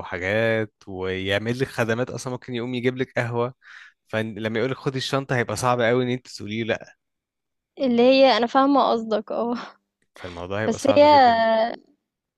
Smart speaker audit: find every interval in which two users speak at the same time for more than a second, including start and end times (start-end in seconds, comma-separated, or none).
none